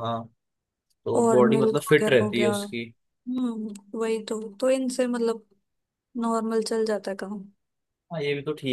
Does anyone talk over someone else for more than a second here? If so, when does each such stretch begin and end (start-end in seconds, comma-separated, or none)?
1.1-2.5